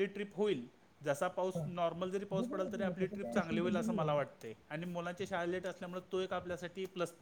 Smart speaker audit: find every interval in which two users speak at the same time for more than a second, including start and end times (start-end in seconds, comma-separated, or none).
2.3-4.1